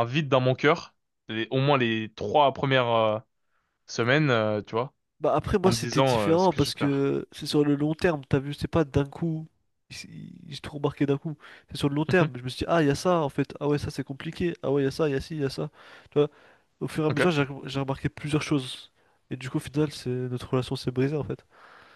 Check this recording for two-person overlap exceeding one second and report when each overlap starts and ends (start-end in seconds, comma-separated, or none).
5.6-7.0